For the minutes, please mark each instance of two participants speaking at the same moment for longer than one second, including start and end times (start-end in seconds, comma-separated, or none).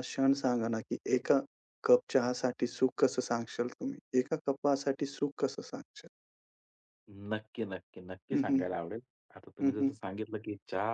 none